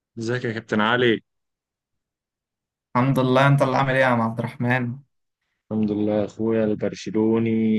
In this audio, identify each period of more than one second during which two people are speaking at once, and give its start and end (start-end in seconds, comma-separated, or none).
none